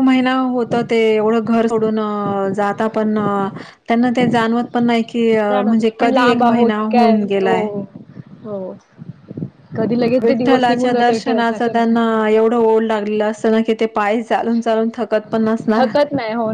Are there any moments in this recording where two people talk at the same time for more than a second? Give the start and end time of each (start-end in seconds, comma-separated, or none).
5.7-7.5, 10.2-11.9